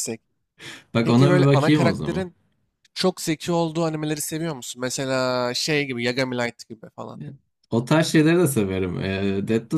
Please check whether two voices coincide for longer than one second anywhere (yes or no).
yes